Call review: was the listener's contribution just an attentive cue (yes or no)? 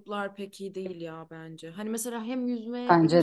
yes